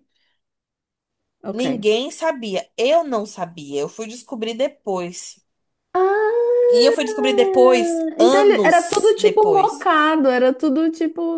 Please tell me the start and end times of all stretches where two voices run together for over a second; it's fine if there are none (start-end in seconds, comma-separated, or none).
8.2-9.9